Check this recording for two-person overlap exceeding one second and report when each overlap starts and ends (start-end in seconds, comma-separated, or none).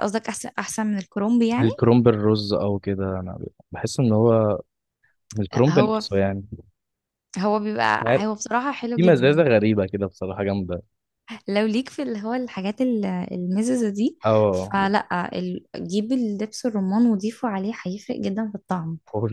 none